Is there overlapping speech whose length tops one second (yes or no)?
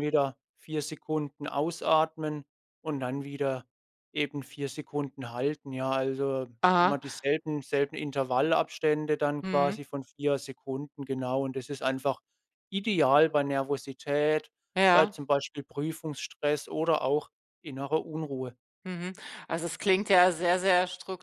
no